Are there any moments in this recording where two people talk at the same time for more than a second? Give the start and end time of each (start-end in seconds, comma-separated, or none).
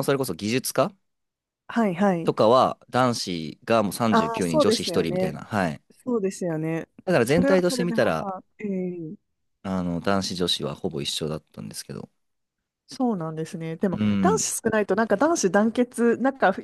4.1-5.4, 7.0-8.3